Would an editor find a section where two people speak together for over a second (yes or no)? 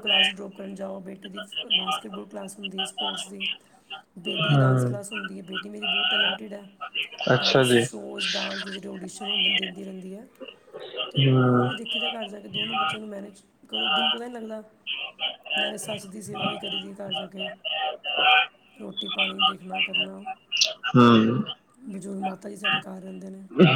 no